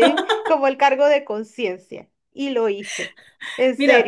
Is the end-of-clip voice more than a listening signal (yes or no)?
yes